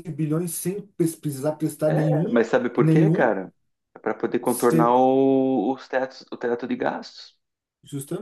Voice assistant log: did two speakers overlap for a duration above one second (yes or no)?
yes